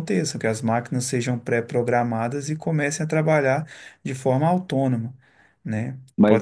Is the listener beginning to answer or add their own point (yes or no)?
no